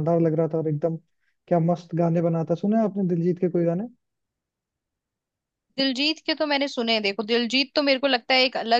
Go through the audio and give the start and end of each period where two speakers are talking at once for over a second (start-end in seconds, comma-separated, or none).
none